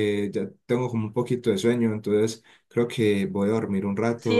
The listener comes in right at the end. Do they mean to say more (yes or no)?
yes